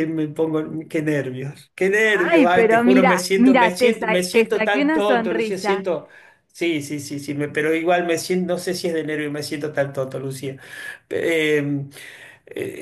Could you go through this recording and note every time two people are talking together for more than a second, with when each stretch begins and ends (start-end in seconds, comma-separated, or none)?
2.2-5.9